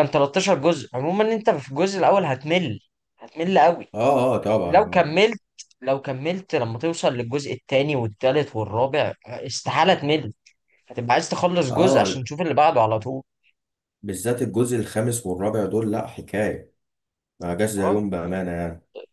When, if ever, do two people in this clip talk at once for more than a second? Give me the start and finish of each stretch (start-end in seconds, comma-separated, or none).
none